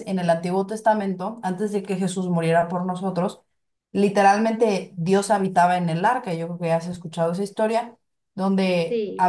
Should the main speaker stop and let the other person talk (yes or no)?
no